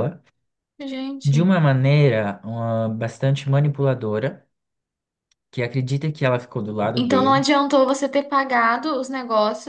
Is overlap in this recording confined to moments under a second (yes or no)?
yes